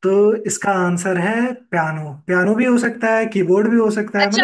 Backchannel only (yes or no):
no